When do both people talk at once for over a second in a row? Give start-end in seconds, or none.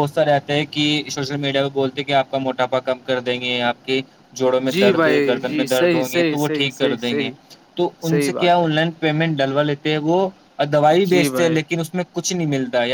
4.7-7.3